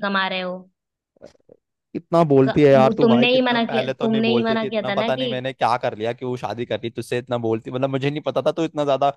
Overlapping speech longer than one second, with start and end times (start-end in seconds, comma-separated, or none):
2.5-5.3